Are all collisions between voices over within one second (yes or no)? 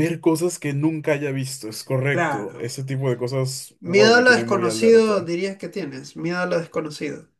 no